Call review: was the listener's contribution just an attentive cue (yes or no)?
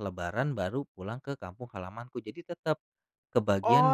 no